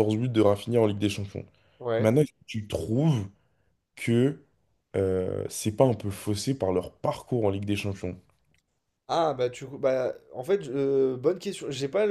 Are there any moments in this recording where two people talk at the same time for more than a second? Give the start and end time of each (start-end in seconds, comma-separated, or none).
none